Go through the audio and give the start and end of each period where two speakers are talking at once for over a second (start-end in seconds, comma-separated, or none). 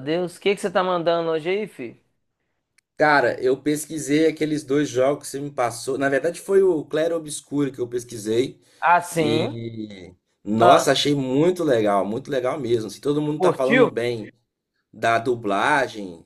none